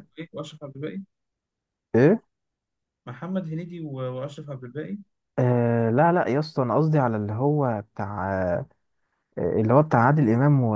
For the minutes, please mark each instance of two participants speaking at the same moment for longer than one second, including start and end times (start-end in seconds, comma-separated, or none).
none